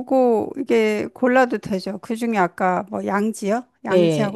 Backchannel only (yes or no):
no